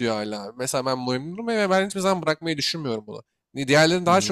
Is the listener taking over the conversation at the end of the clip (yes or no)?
no